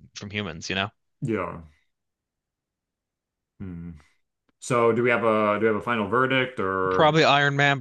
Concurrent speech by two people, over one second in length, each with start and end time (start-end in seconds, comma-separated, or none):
none